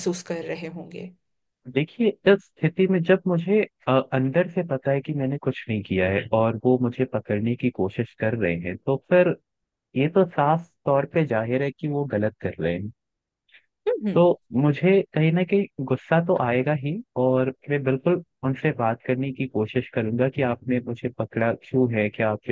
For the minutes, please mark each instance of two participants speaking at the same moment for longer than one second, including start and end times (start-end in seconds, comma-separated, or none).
none